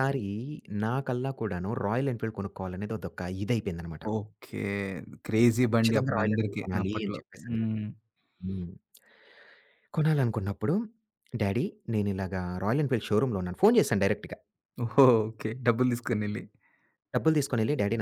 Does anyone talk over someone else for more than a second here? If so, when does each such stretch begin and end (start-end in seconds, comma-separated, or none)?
5.6-7.6